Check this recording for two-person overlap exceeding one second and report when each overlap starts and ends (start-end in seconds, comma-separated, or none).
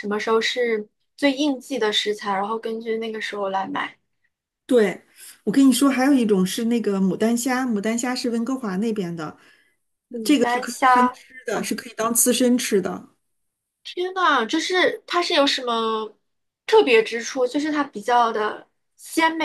10.2-11.7